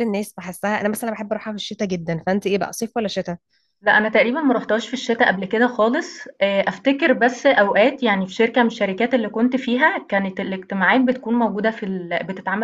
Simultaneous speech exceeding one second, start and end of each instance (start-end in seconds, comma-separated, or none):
none